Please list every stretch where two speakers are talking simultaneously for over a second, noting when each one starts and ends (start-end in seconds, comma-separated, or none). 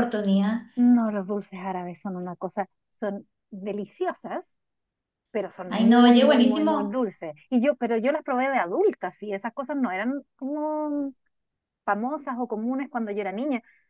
5.7-7.0